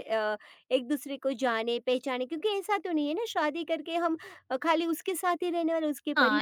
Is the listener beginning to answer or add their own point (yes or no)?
yes